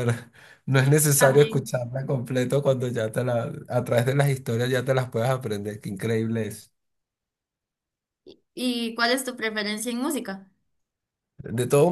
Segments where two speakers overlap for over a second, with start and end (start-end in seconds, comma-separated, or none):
none